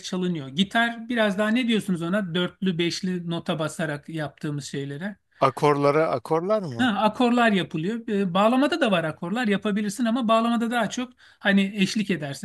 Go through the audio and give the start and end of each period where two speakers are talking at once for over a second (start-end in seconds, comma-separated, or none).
none